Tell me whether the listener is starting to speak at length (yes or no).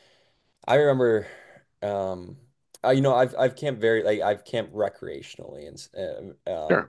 no